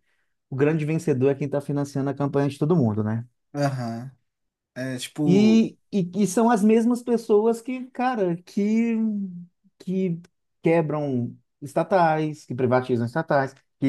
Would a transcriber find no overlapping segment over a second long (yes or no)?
yes